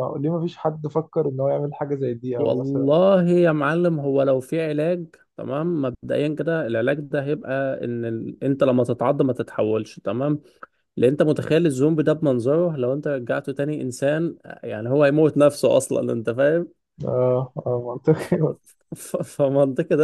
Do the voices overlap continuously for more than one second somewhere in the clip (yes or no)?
no